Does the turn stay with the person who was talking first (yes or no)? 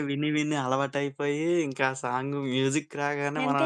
no